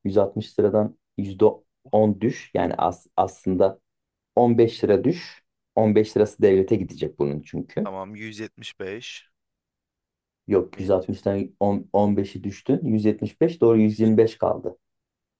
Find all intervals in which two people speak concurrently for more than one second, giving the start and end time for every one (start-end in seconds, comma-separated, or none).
none